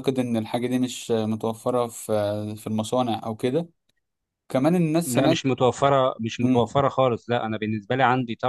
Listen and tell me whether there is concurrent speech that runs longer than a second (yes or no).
no